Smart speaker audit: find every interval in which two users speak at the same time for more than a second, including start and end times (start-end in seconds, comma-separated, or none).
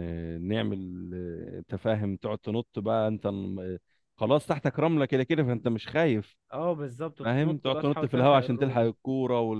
7.2-8.9